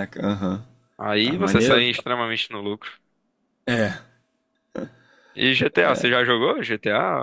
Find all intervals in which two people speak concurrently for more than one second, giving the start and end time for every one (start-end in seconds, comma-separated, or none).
none